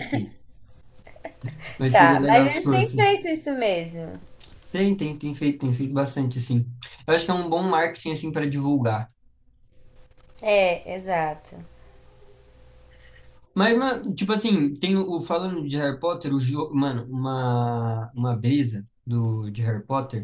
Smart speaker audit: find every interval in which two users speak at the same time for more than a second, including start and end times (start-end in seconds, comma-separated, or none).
1.9-3.1